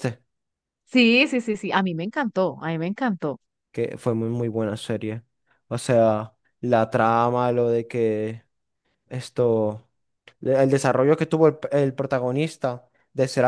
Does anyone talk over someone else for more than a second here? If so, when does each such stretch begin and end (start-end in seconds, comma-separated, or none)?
none